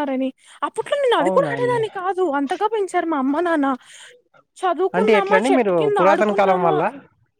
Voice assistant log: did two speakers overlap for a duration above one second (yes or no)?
yes